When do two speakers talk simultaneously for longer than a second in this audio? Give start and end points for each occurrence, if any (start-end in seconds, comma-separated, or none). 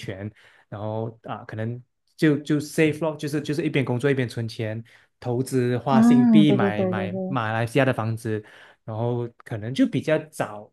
5.9-7.4